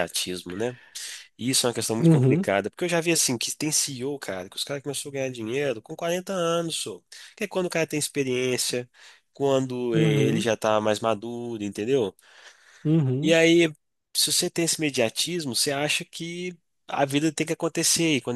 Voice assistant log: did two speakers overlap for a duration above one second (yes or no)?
no